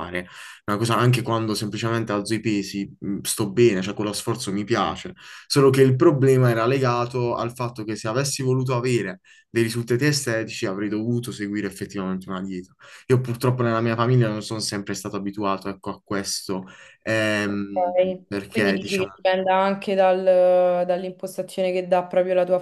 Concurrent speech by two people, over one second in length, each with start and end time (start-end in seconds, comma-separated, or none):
17.4-19.1